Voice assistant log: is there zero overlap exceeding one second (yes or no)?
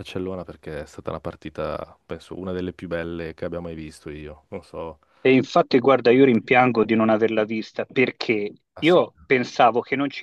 yes